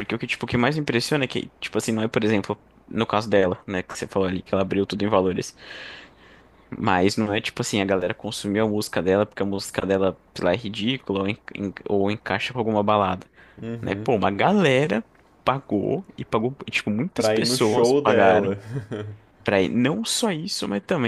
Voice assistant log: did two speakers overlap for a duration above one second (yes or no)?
yes